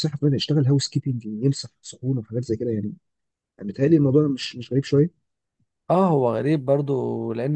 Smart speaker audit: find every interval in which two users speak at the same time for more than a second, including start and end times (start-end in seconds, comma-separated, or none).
none